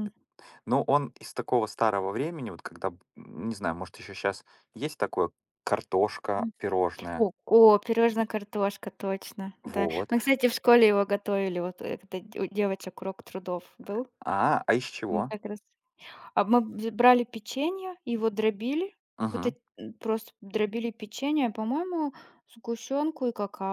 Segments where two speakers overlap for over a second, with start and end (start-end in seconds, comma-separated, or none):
none